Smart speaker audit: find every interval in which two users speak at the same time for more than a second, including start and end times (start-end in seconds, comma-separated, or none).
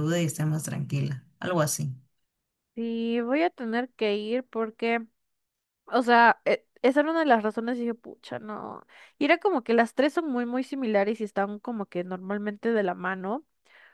none